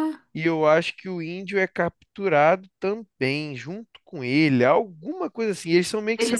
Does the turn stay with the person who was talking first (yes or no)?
no